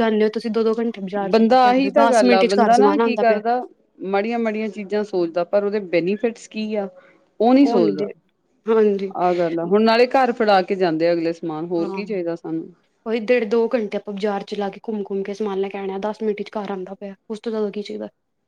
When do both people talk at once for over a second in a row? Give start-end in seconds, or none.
1.3-3.4